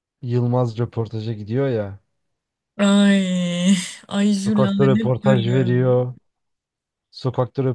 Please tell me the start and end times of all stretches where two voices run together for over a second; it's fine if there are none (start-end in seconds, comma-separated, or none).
4.5-6.0